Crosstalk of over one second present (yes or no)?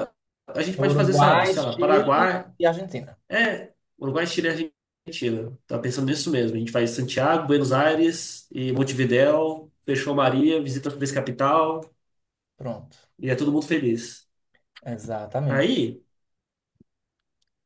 yes